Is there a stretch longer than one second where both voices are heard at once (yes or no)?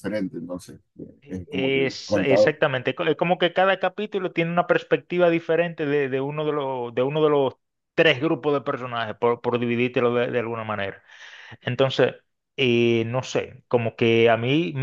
yes